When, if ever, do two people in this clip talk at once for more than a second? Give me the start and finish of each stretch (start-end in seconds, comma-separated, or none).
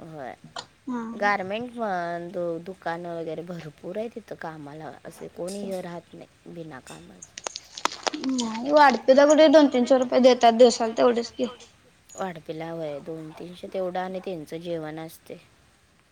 none